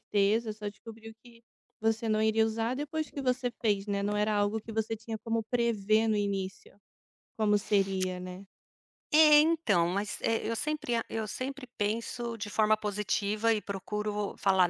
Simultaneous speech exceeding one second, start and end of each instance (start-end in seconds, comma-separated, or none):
none